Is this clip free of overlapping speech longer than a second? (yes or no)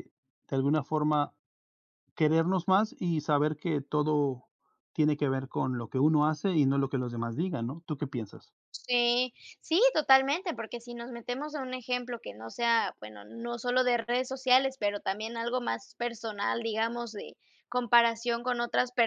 yes